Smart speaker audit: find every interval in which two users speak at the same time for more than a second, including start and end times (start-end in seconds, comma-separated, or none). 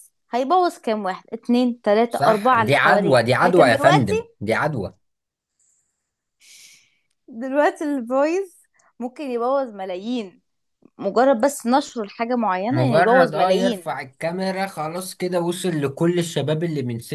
2.1-4.3, 12.7-13.9